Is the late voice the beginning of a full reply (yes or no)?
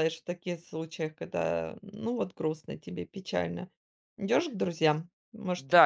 yes